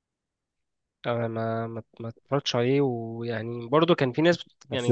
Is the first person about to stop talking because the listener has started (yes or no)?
no